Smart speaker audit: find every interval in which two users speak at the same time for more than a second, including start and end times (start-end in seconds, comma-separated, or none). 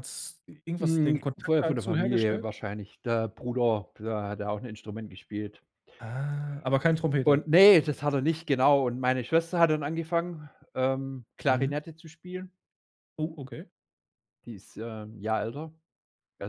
0.8-2.5